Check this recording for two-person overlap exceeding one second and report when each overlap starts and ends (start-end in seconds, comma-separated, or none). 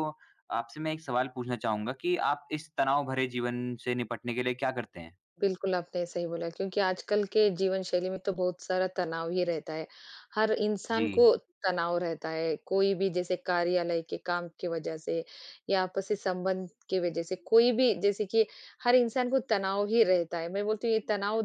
none